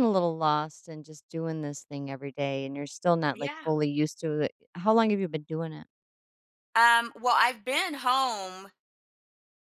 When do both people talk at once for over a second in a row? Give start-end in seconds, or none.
none